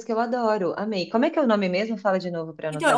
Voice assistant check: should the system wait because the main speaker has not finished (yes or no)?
no